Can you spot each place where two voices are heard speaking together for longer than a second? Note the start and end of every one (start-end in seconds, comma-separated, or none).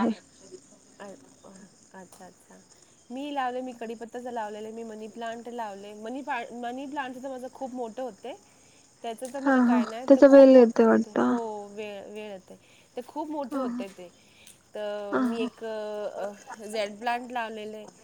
9.4-11.2